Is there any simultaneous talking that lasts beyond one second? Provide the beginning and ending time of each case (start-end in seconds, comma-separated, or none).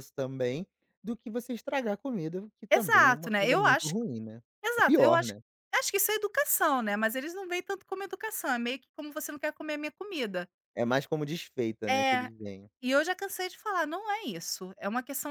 2.7-3.9